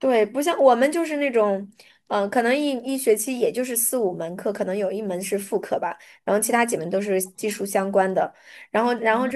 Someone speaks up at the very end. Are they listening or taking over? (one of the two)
listening